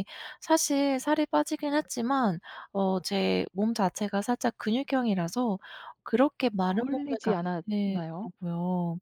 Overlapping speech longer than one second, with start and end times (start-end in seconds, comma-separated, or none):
6.7-8.3